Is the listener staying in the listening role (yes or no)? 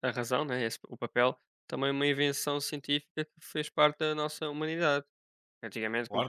yes